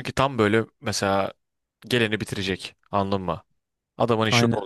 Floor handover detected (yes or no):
yes